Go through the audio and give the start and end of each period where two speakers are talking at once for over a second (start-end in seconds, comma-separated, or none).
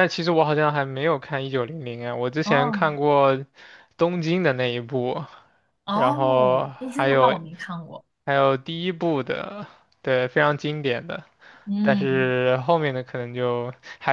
5.9-7.4